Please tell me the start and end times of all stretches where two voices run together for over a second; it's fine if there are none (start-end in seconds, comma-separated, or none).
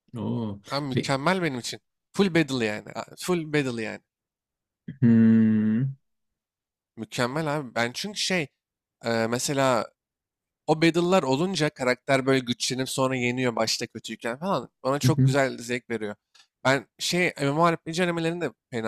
none